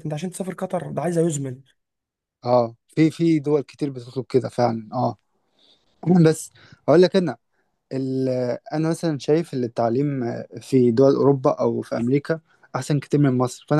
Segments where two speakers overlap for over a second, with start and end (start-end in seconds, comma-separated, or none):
none